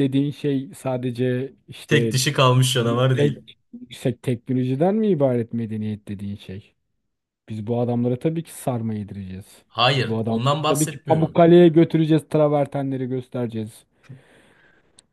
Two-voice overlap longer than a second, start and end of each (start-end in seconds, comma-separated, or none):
9.7-11.4